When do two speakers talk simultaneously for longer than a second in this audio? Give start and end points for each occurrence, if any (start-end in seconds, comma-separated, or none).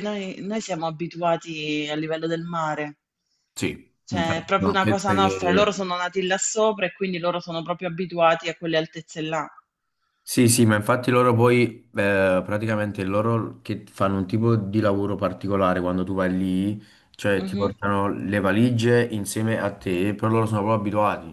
4.0-5.6